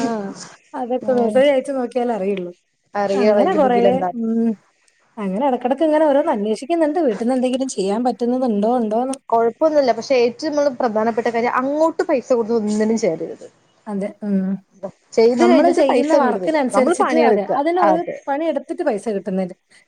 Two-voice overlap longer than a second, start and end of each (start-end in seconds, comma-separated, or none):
15.4-18.2